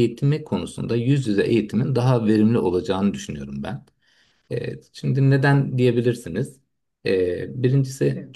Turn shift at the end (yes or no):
no